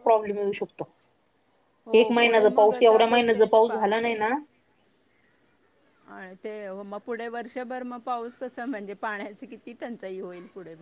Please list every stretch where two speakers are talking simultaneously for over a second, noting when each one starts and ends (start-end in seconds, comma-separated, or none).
2.0-3.8